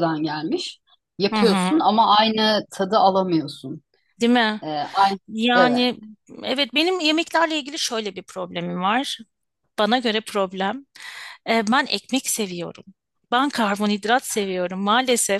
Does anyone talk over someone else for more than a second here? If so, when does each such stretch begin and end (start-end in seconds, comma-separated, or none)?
none